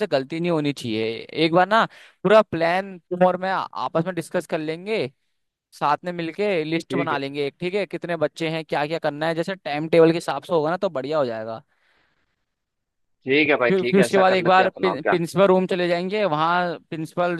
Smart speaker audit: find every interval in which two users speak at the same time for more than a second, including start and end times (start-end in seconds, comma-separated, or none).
13.7-15.2